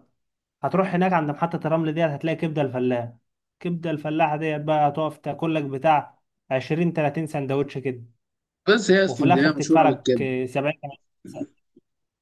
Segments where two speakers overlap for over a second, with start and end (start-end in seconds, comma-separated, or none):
9.1-10.3